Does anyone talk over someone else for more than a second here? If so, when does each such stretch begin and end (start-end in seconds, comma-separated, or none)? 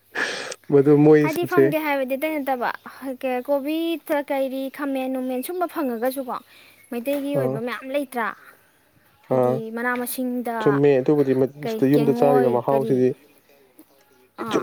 11.6-13.0